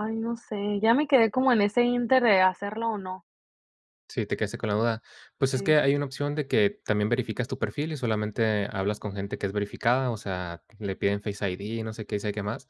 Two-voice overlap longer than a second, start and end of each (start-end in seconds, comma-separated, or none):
none